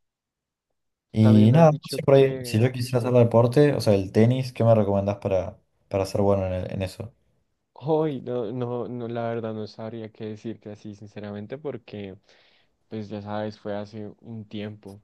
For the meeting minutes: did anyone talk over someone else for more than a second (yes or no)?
yes